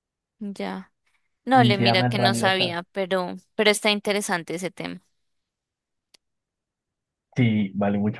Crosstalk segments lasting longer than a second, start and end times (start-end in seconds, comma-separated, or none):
1.5-2.8